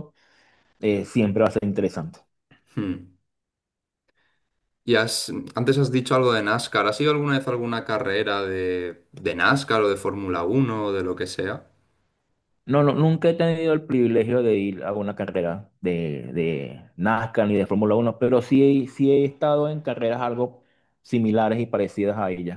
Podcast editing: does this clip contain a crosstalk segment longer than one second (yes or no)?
no